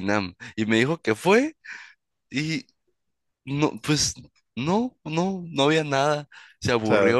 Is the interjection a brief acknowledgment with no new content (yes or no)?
yes